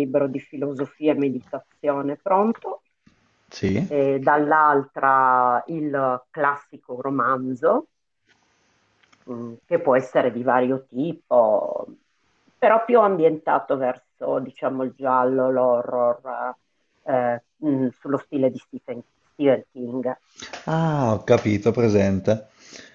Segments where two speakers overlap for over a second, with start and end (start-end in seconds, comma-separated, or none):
none